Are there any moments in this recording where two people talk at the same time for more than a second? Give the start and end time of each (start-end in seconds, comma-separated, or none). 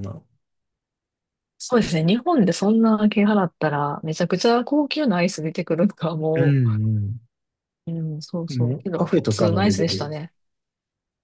8.5-10.1